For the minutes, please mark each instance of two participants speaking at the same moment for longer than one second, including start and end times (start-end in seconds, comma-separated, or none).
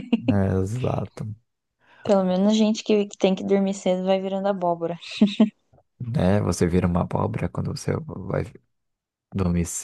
none